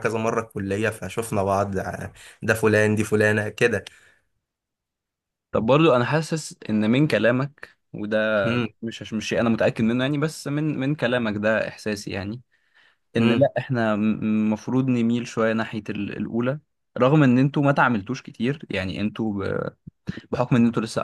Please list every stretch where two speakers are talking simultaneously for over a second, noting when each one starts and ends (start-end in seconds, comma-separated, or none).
none